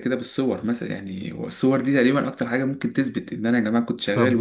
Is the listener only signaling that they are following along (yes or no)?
no